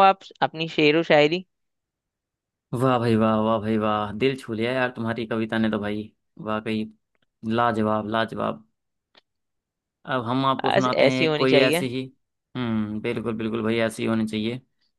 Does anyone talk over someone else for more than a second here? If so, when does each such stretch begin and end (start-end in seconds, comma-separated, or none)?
10.6-11.9